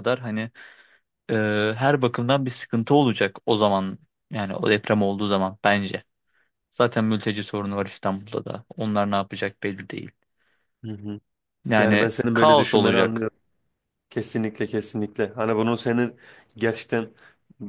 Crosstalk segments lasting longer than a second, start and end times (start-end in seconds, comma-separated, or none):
11.8-13.3